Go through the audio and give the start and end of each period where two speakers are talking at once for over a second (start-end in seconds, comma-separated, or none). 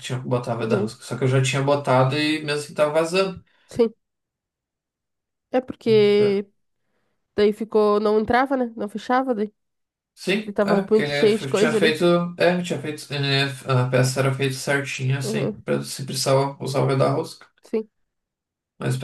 10.4-12.0